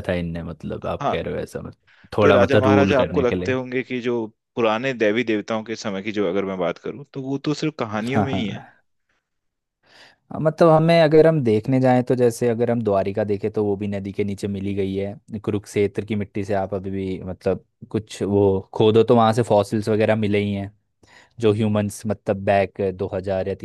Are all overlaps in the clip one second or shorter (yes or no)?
no